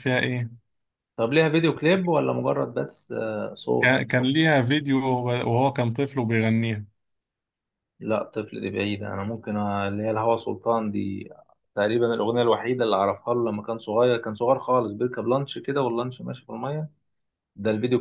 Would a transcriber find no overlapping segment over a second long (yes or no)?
yes